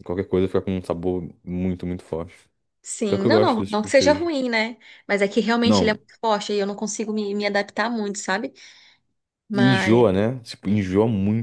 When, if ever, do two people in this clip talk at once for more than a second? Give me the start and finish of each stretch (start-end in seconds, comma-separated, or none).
3.1-4.3